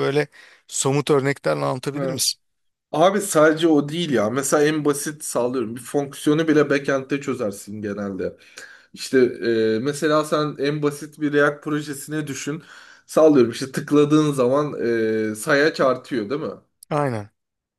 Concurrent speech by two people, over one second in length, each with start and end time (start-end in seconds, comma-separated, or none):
none